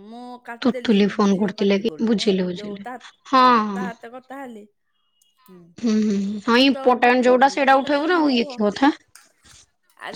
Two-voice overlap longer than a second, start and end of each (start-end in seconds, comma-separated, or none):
0.6-2.8, 6.5-8.6